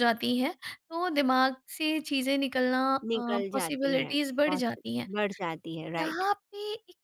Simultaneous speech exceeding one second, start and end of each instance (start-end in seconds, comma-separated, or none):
3.1-5.1